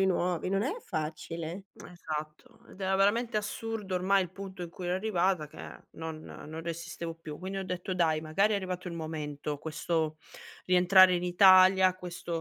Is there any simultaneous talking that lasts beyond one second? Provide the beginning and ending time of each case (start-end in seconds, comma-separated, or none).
none